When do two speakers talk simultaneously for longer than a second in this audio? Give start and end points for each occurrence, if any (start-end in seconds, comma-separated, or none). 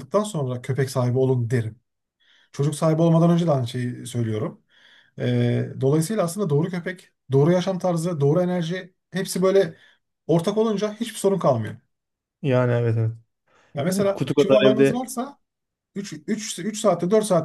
13.9-15.1